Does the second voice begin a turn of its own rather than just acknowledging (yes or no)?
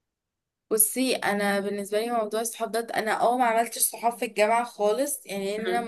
no